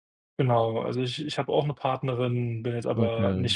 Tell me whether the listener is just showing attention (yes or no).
yes